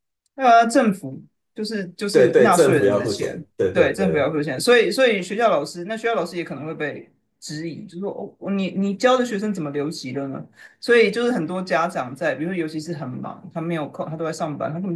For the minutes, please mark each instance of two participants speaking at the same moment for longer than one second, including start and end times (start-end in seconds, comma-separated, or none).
2.1-4.3